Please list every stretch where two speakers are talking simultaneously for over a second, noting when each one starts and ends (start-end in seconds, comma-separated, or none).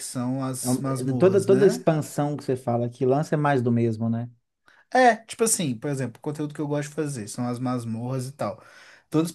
0.6-1.8